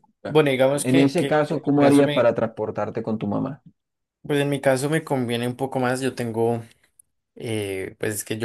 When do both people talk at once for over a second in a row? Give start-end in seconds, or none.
0.8-2.3